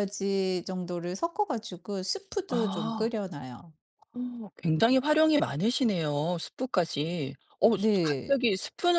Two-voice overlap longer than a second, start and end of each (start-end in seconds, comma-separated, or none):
none